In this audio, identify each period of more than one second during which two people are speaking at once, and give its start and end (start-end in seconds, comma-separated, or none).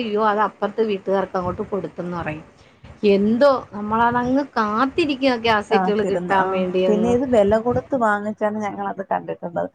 none